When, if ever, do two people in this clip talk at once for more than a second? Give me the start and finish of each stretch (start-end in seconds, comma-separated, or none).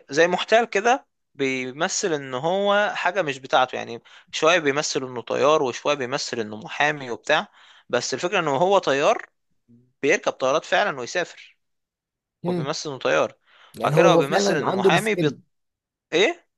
13.8-15.3